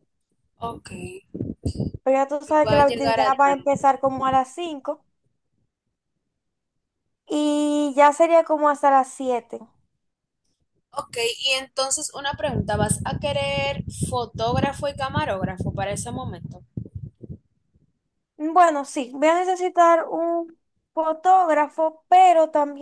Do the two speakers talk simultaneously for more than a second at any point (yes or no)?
yes